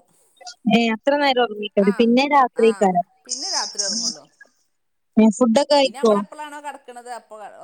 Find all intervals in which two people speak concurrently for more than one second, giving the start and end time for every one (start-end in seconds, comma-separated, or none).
none